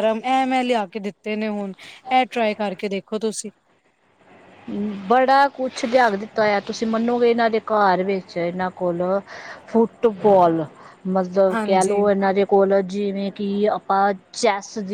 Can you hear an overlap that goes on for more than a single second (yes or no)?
no